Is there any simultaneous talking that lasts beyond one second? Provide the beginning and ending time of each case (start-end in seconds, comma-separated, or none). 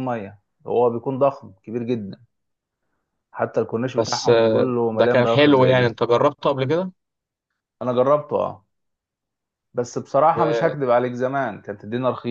4.0-6.0